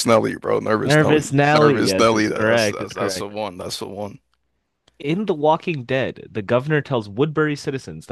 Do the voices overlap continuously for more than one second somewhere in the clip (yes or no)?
yes